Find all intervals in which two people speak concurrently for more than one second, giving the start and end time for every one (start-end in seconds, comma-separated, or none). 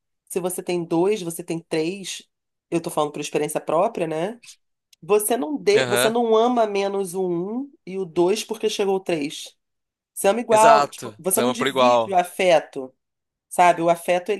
10.5-12.2